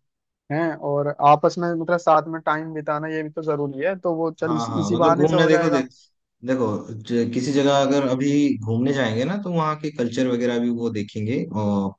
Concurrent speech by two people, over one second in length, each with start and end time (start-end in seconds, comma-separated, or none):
4.5-5.8